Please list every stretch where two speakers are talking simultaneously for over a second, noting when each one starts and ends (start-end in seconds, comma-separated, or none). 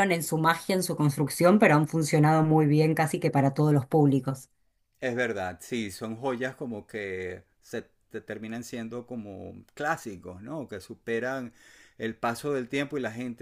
none